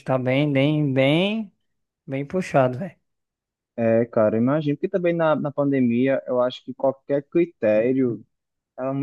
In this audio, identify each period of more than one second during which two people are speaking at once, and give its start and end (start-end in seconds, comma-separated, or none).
none